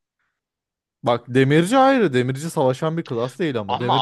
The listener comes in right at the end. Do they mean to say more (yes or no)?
no